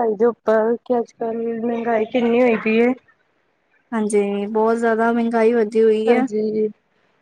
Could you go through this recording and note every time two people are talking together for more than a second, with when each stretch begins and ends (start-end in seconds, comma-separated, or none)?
none